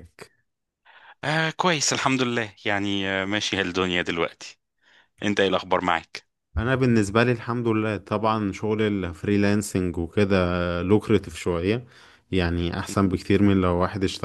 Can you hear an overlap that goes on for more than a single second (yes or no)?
no